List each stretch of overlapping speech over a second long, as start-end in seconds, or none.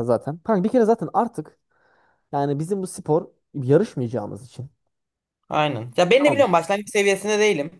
none